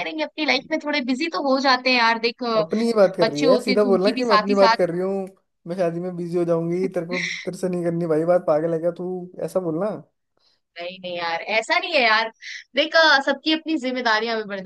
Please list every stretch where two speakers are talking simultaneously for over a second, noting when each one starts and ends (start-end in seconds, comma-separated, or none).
3.2-4.8